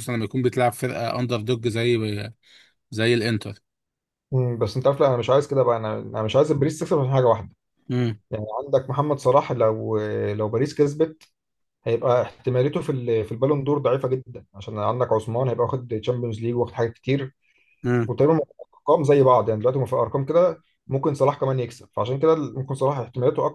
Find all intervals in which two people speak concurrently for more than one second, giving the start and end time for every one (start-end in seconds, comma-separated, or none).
none